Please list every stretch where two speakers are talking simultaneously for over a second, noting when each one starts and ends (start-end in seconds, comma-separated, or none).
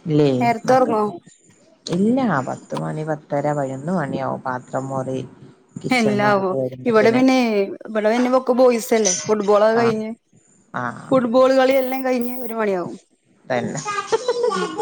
none